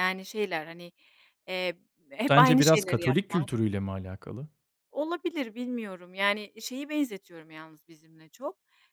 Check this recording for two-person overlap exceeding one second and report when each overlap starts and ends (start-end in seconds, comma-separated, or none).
2.3-3.5